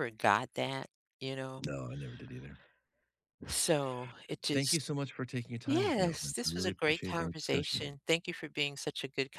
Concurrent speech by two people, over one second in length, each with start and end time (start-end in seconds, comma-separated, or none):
5.7-8.0